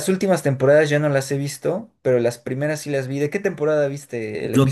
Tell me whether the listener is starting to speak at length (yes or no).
yes